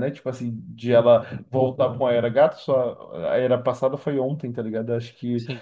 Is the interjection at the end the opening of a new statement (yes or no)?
no